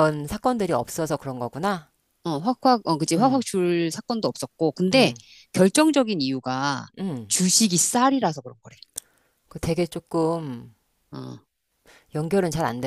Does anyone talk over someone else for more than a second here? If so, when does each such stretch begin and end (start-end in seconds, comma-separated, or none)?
none